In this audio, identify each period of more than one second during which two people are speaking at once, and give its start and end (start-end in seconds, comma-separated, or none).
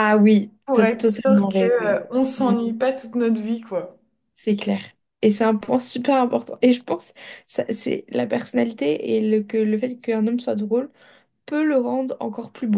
0.7-2.6